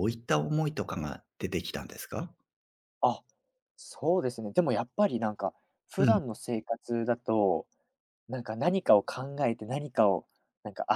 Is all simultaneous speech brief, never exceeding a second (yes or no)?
yes